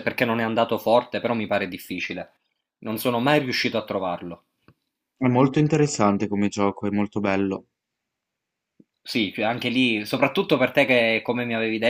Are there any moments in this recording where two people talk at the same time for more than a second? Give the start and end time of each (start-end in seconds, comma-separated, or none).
none